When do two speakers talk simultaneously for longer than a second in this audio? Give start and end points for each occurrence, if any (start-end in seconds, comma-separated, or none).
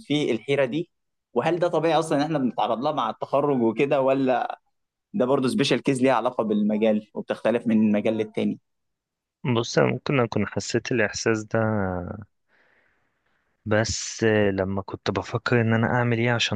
none